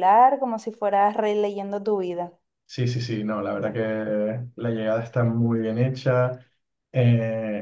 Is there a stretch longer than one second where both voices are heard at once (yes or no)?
no